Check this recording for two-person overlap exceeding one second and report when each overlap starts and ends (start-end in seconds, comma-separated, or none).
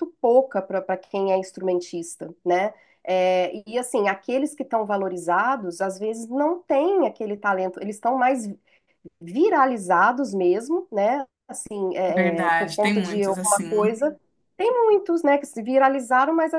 12.1-14.0